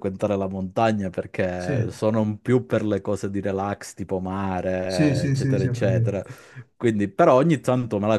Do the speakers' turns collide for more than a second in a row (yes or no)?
yes